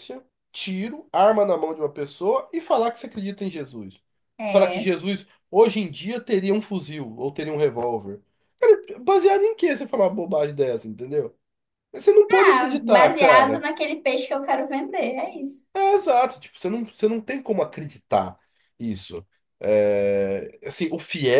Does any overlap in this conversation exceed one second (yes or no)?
yes